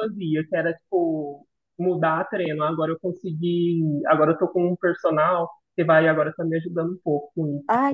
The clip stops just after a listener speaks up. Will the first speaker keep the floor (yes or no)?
no